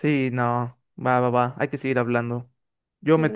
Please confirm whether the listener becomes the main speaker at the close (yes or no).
no